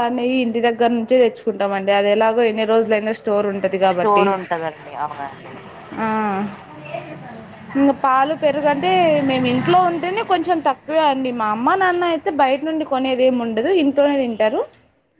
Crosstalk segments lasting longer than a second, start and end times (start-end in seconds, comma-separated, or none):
none